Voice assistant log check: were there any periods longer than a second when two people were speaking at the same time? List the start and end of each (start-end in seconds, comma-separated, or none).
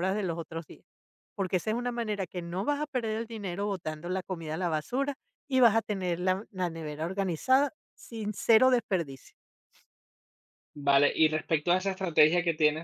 none